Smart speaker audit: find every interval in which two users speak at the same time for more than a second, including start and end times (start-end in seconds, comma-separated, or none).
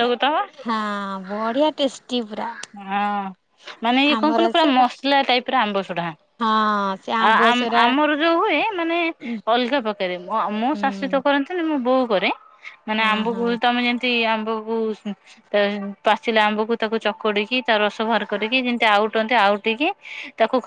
none